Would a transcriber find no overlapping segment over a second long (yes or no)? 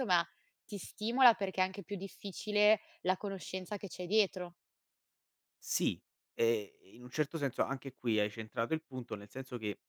yes